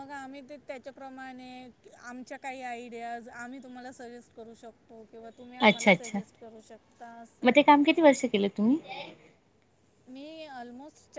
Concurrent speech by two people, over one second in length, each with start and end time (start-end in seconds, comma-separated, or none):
none